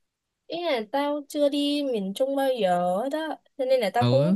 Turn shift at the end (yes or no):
no